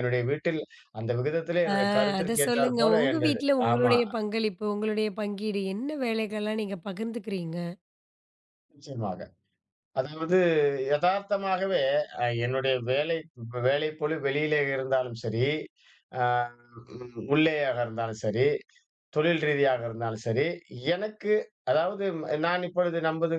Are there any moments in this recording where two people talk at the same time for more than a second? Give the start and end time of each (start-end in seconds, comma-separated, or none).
2.2-4.0